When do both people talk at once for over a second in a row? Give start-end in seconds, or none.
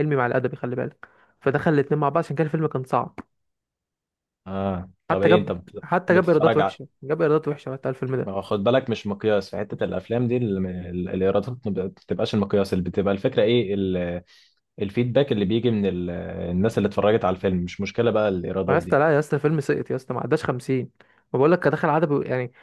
5.1-6.8